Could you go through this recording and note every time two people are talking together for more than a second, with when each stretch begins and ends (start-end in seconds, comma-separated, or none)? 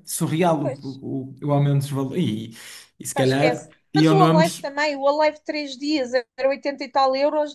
3.1-4.7